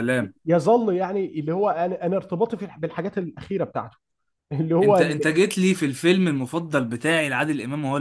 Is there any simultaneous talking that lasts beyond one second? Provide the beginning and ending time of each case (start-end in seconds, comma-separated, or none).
none